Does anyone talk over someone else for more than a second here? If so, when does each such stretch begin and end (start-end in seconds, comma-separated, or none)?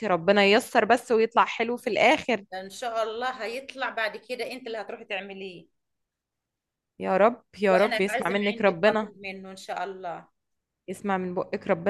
7.7-9.1